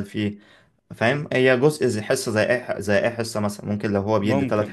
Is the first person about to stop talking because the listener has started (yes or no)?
no